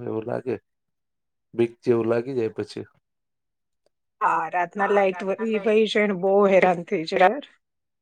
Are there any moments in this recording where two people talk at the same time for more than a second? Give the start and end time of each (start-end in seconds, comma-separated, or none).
none